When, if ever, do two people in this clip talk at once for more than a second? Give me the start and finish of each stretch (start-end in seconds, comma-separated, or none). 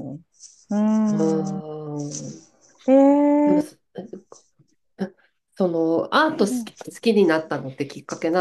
none